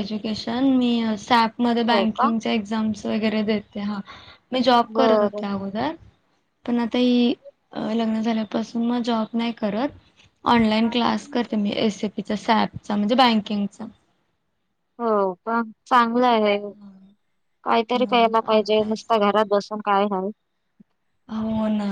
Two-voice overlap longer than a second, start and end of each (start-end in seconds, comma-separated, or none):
17.9-19.4